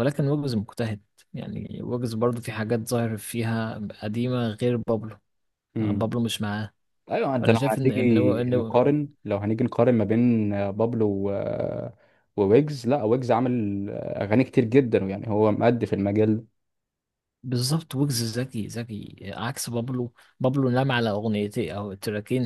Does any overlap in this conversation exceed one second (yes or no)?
yes